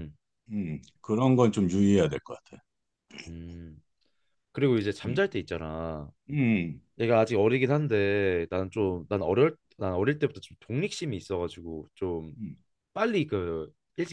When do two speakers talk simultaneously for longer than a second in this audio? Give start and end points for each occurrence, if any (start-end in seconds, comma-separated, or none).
none